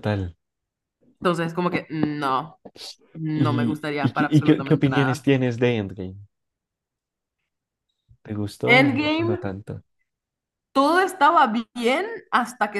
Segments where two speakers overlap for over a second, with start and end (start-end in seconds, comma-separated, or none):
3.3-5.3